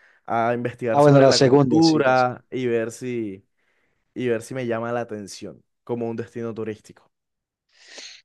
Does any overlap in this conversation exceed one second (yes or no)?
yes